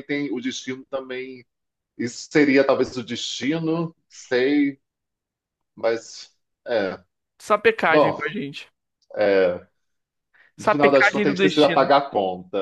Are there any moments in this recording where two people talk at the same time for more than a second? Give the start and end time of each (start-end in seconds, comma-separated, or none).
10.6-11.9